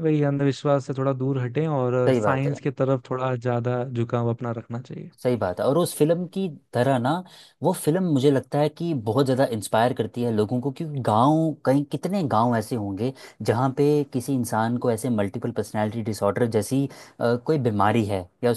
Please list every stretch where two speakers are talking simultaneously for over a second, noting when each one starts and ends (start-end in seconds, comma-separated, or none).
none